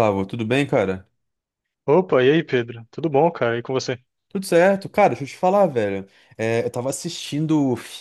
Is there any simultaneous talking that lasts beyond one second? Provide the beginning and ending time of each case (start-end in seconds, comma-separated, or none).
none